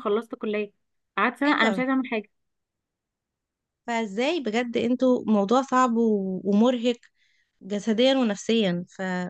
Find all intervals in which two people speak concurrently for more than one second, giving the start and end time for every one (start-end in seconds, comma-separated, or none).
none